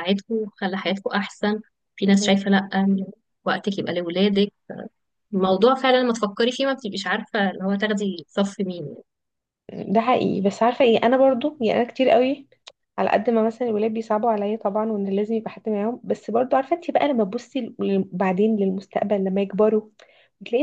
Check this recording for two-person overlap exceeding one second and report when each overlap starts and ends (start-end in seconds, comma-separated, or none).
none